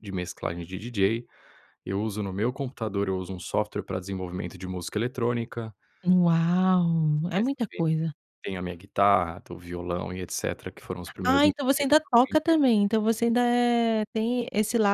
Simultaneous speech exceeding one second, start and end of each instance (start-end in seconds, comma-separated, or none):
11.3-12.6